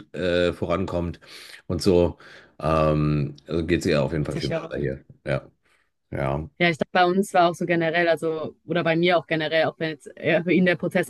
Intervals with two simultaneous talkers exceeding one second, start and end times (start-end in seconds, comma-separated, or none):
none